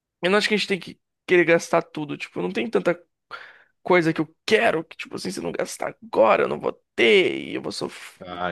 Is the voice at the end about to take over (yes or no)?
no